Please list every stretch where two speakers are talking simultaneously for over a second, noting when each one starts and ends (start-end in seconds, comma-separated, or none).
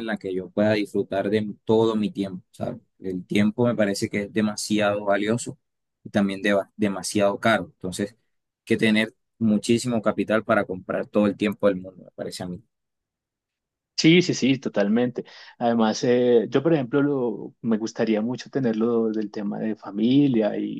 none